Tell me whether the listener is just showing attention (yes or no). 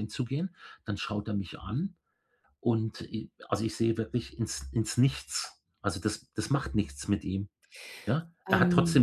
yes